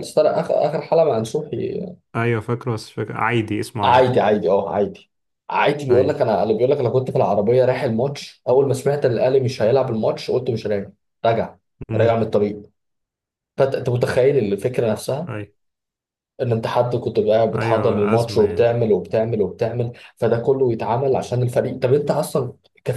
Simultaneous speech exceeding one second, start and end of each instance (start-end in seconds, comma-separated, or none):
17.5-18.7